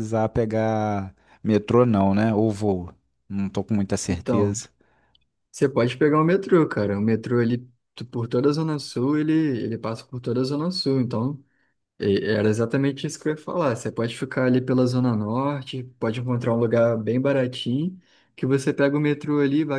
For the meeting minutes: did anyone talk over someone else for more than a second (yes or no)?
no